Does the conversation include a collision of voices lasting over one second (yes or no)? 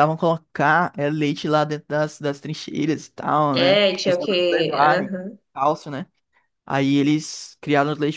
yes